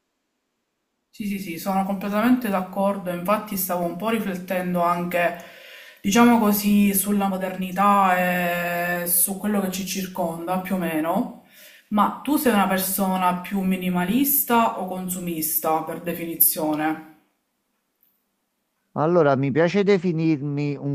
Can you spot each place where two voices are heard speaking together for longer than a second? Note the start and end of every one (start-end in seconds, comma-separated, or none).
none